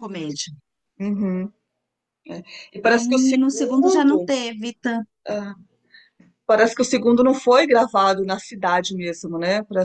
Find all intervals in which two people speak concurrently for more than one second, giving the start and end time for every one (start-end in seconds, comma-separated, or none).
2.9-4.3